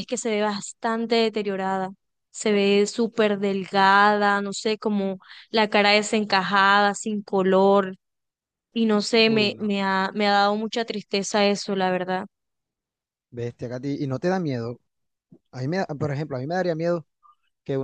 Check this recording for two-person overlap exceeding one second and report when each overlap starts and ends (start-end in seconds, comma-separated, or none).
none